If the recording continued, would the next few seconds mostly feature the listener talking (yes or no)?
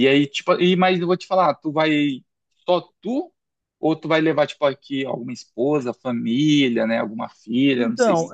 yes